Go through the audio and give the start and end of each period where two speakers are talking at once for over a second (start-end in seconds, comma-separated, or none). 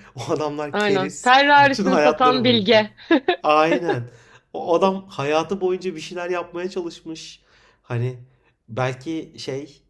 0.7-2.8